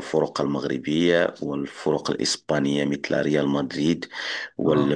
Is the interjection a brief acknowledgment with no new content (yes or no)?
yes